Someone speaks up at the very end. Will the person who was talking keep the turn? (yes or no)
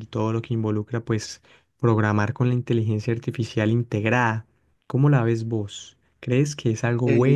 yes